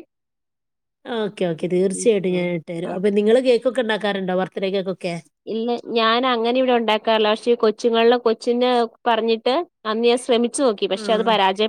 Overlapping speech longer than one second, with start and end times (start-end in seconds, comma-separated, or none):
none